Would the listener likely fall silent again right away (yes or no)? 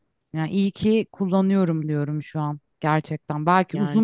yes